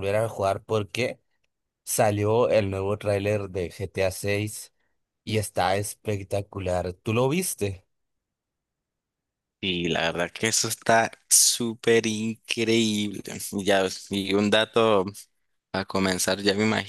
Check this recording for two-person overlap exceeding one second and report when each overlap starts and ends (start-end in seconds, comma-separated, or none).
none